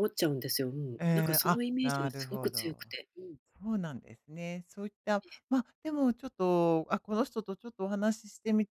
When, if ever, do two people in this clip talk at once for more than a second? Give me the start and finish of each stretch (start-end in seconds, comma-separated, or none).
1.0-2.9